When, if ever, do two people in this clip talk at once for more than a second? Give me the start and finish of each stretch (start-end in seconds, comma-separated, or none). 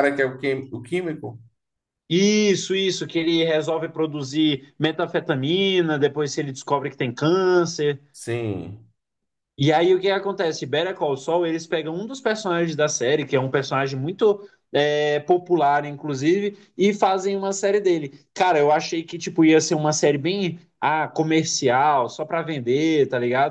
none